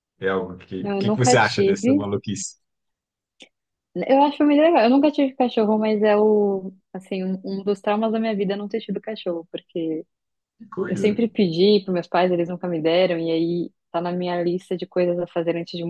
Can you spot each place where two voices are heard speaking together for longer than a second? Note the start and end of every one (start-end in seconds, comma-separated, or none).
0.8-2.1